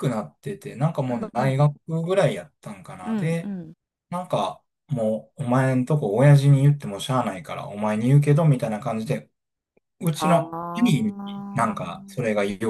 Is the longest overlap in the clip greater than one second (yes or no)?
yes